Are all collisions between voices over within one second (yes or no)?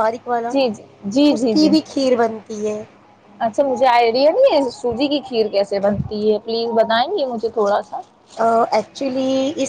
yes